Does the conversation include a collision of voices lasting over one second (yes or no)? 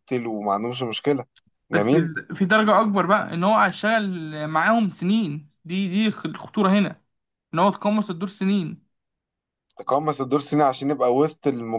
no